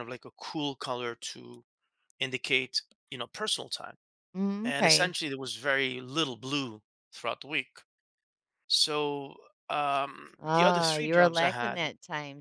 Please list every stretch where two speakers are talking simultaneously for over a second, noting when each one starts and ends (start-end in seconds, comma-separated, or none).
10.4-11.8